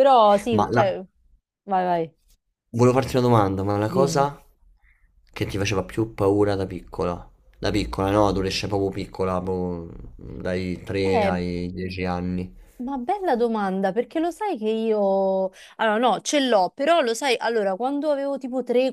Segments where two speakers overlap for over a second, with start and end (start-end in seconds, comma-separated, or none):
none